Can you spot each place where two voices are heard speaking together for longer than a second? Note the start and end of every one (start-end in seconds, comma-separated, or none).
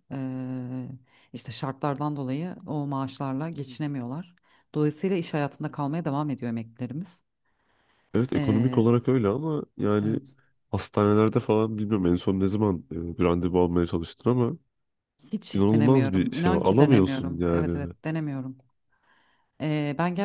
15.5-17.9